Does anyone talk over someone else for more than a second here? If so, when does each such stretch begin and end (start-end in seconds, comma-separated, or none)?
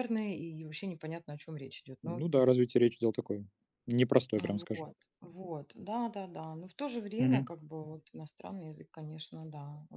none